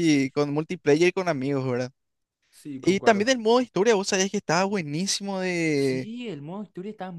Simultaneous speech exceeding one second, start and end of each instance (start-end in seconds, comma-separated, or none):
none